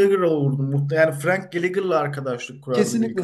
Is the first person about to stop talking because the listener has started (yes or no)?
yes